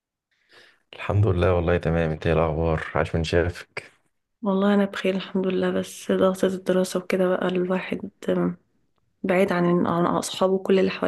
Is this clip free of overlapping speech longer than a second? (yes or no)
yes